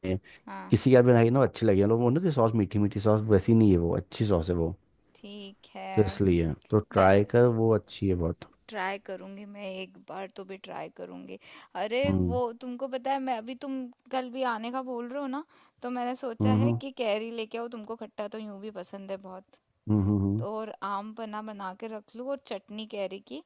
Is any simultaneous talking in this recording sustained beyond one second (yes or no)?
no